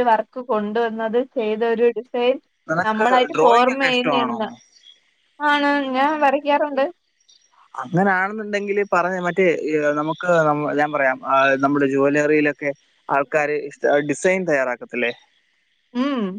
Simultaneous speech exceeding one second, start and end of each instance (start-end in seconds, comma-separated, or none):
2.9-4.4